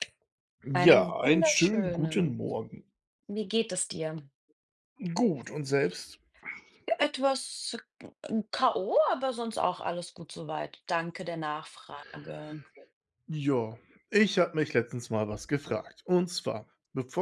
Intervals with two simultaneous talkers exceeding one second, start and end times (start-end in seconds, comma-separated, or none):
0.8-2.4